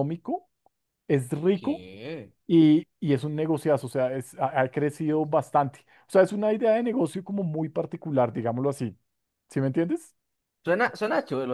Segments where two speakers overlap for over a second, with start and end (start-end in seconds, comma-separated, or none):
none